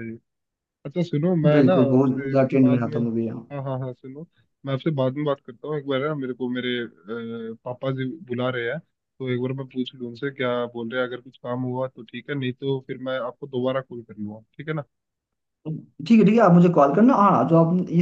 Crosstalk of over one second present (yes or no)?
yes